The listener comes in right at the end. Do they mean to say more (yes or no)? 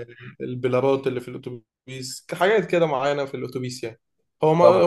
no